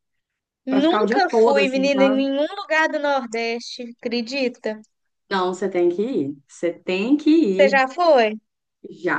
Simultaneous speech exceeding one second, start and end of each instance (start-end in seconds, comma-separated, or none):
0.7-2.2